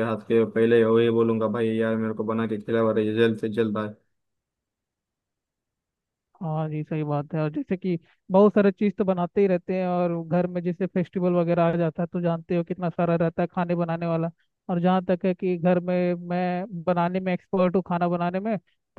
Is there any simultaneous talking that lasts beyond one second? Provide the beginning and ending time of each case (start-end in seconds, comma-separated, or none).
none